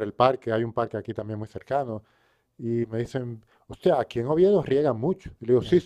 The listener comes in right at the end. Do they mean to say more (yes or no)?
yes